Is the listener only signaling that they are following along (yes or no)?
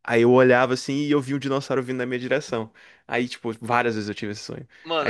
no